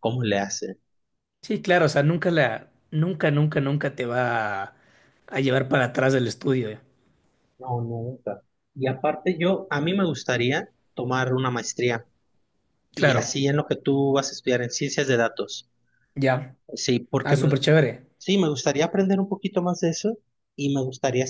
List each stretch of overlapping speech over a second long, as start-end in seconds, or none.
none